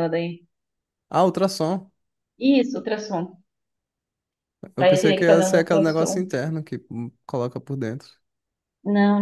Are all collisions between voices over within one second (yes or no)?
no